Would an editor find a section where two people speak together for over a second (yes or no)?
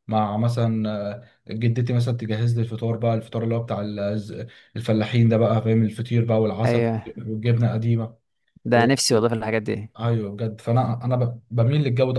no